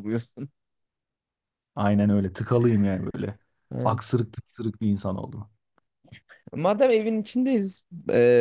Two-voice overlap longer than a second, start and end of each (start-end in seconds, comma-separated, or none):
none